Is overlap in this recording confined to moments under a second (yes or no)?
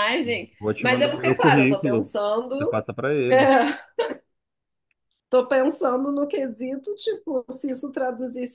no